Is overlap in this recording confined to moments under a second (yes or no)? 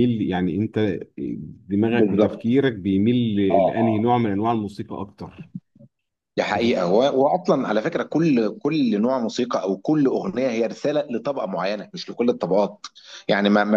yes